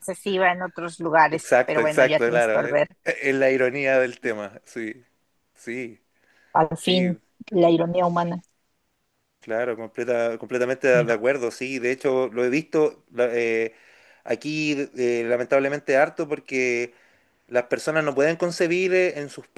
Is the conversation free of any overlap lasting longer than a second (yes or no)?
no